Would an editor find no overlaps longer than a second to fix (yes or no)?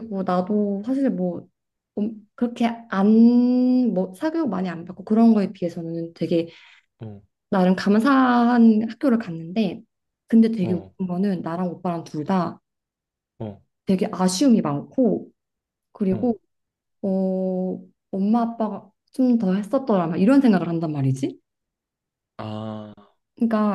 yes